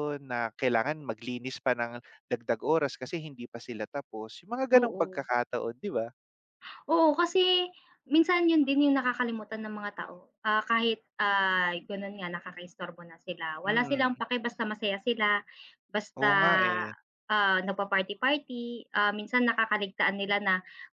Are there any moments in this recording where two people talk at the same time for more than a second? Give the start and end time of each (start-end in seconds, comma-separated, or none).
none